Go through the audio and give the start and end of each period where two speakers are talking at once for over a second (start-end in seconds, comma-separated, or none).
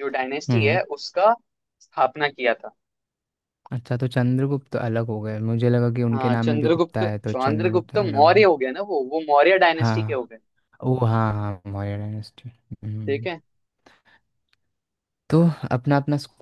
6.1-8.4